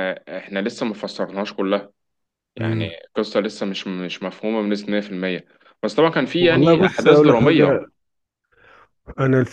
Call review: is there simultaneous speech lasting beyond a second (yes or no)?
yes